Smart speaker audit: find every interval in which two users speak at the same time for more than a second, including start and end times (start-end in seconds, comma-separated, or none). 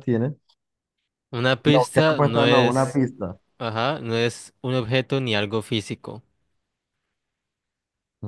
1.6-3.0